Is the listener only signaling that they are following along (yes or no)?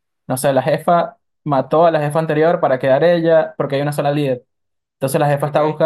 yes